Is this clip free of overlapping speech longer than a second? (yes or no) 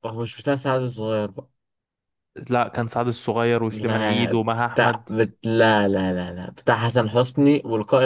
no